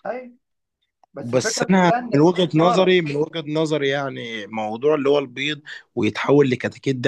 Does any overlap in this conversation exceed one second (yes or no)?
yes